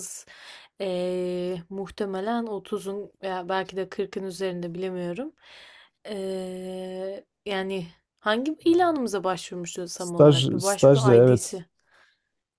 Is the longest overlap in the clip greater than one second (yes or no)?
yes